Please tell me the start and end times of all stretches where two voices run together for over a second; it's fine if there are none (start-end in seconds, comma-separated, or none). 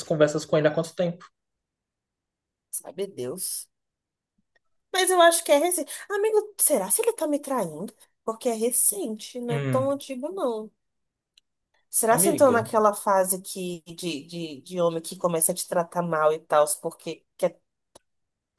none